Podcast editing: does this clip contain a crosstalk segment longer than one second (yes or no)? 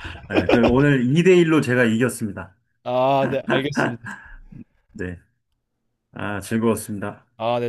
no